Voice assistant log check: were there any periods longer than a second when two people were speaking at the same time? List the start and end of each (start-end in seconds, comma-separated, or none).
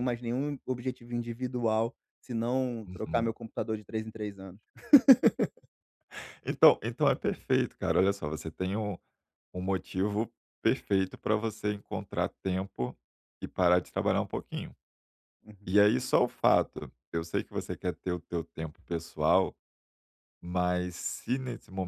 none